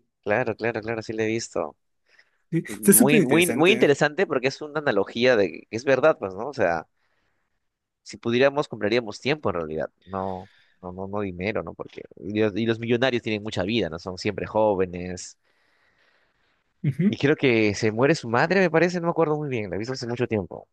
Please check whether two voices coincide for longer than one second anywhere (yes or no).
yes